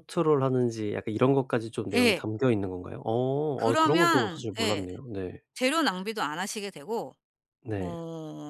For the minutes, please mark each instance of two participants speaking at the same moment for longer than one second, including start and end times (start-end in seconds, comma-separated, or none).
3.5-4.8